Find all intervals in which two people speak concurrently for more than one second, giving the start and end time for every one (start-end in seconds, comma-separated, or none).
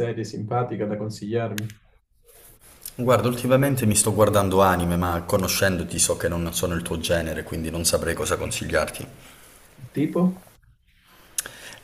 none